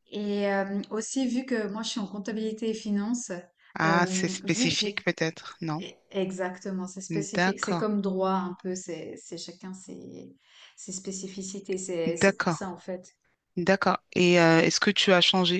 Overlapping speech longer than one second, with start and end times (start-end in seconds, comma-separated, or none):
3.8-5.1